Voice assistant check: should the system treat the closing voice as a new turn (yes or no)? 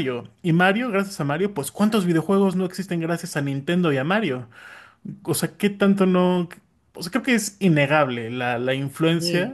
no